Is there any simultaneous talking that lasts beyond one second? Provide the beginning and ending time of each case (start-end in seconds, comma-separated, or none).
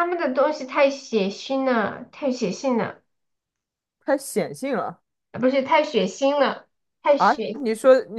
none